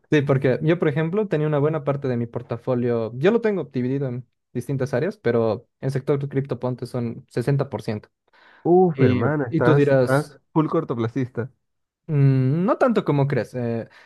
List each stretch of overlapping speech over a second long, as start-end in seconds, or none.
8.9-10.4